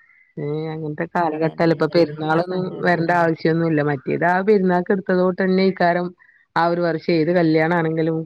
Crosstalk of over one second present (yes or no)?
yes